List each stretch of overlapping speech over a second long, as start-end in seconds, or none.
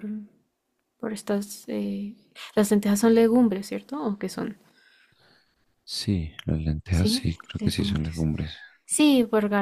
6.9-8.3